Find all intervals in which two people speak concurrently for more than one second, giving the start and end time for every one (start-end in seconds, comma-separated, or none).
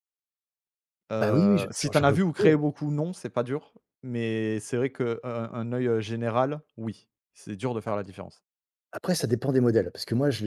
1.2-2.6